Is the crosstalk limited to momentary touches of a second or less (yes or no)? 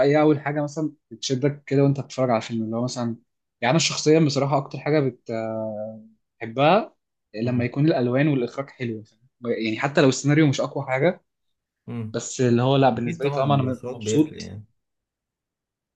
no